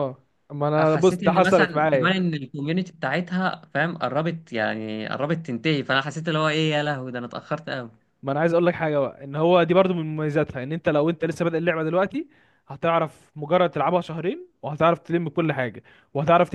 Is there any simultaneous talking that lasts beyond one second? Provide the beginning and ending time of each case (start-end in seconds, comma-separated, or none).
0.8-2.2